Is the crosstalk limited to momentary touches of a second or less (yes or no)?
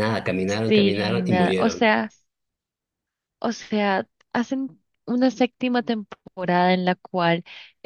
no